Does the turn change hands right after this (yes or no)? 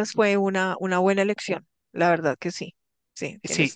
yes